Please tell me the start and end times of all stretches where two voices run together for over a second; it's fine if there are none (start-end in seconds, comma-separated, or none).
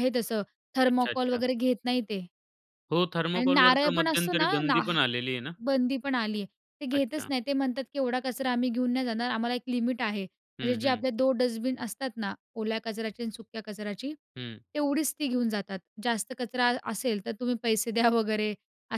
3.3-4.8